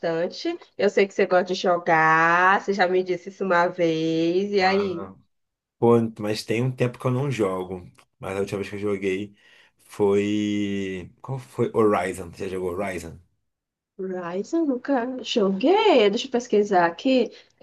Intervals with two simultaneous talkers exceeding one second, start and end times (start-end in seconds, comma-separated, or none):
none